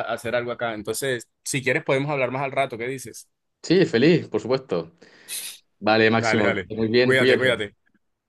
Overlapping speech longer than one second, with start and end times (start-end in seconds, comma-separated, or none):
6.1-7.8